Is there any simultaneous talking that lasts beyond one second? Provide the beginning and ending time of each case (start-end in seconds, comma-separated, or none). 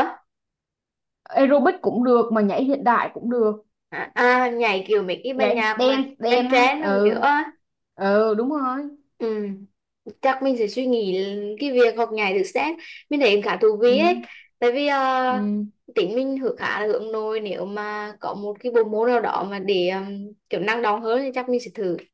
5.3-7.3